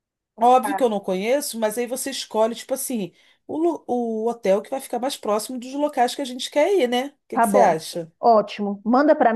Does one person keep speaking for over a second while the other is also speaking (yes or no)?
no